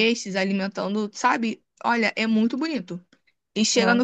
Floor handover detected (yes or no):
no